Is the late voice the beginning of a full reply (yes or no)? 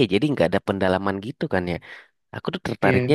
no